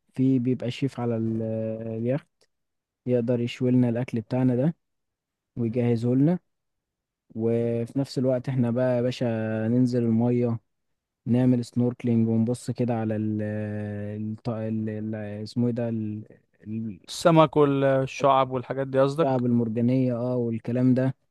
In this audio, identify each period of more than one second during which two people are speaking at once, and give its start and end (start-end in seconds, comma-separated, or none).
none